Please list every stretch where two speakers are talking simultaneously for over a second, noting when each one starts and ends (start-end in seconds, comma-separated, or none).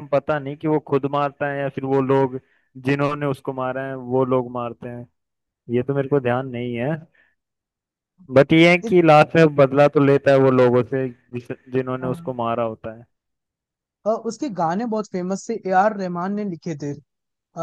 none